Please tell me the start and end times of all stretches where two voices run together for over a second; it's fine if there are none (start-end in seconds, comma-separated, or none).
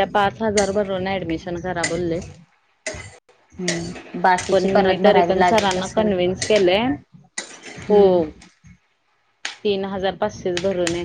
4.5-6.1